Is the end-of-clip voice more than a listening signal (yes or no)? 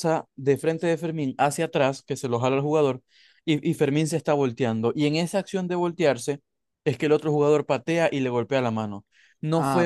yes